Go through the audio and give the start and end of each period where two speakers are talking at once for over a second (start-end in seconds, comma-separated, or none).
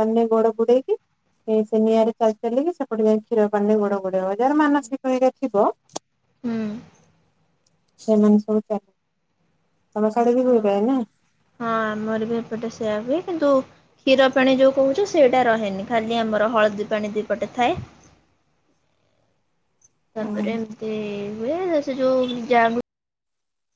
none